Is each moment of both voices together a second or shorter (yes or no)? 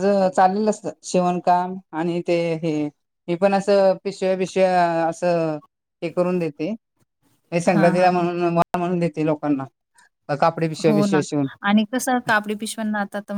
yes